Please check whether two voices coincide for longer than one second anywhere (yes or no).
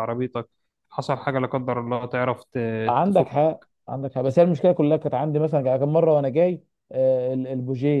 no